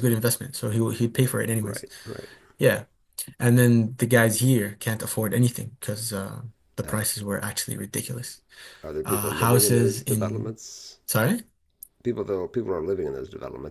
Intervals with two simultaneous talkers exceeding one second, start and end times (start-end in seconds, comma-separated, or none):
9.0-10.5